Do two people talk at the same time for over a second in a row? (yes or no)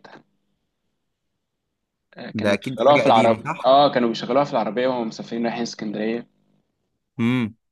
yes